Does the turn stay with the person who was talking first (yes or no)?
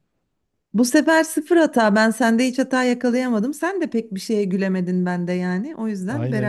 no